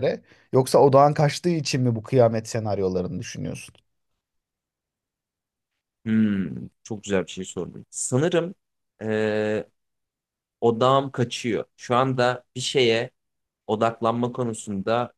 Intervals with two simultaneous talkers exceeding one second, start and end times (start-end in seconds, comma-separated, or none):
none